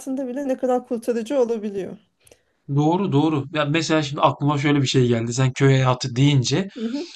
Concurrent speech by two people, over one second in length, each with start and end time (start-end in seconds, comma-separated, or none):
none